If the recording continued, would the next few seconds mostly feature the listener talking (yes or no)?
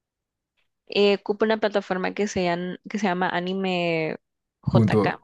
yes